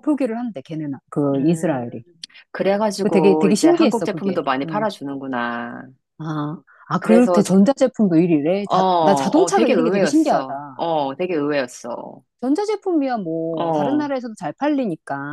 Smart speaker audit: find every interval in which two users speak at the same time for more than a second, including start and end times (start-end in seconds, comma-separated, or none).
3.0-4.9, 8.7-10.4